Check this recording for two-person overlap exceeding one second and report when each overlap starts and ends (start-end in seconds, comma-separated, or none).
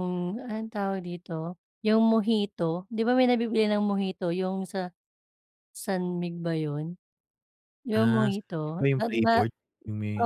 7.9-9.3